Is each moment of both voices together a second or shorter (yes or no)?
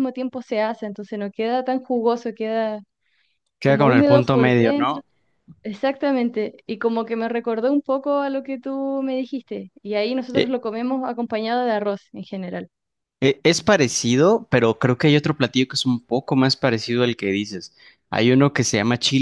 no